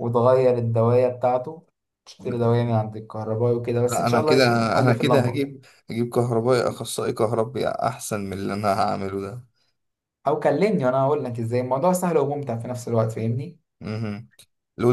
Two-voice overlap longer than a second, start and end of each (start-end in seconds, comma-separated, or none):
3.8-5.5